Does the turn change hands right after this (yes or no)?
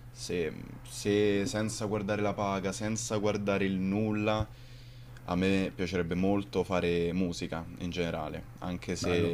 no